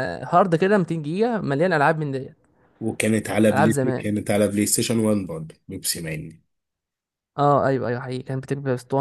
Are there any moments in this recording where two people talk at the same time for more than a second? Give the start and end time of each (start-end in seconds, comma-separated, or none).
none